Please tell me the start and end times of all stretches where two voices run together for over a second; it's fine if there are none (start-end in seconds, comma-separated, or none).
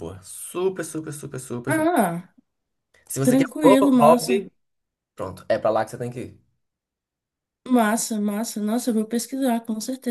3.2-4.5